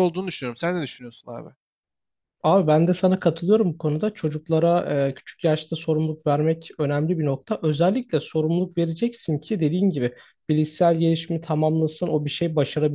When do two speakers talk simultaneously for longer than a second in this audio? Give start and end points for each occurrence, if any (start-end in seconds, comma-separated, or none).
none